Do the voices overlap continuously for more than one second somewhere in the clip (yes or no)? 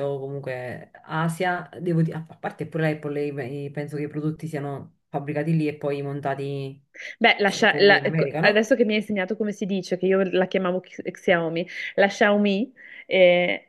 yes